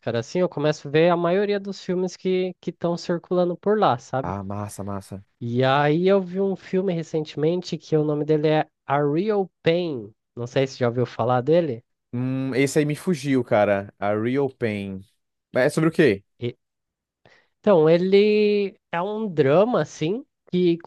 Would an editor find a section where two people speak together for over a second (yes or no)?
no